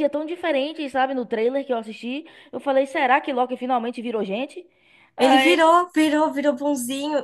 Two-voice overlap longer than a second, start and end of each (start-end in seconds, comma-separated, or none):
none